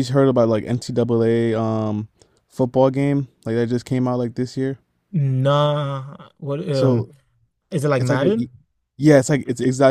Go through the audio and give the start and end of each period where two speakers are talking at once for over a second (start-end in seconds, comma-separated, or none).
none